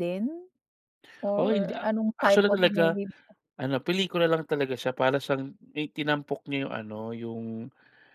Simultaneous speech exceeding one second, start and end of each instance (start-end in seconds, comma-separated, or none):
1.4-3.0